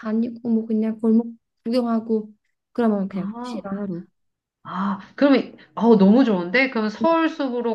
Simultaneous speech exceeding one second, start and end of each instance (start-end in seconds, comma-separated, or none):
none